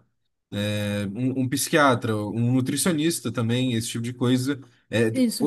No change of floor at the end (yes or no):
yes